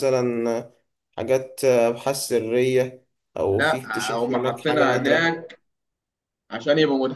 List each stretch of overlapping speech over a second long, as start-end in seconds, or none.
3.5-5.3